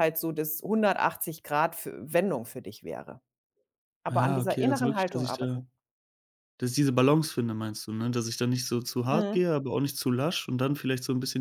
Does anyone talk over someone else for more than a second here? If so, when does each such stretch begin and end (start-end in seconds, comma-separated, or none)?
4.1-5.6